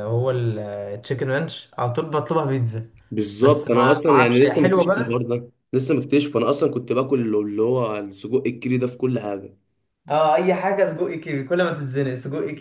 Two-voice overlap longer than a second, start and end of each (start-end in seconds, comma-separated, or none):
3.4-5.3